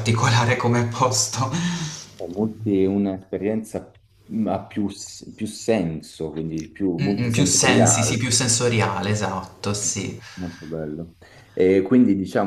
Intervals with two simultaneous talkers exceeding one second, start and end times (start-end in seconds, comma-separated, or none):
7.0-8.3